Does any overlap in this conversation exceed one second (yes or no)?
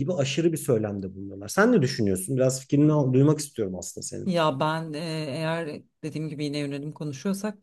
no